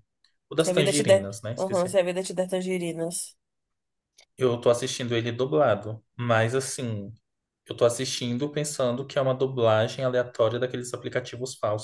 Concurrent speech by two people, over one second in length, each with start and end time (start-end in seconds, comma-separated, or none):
0.6-2.0